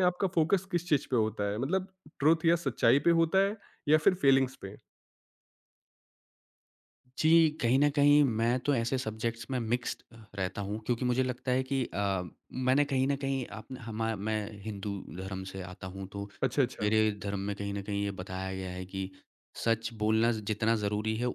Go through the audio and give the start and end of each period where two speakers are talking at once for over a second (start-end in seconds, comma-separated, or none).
none